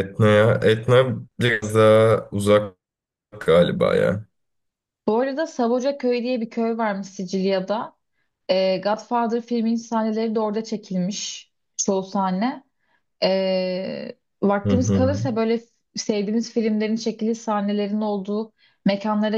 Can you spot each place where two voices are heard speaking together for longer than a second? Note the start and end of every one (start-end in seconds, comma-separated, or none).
none